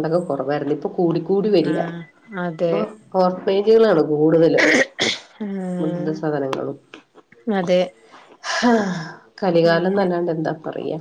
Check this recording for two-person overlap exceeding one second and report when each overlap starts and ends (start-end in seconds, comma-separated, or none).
none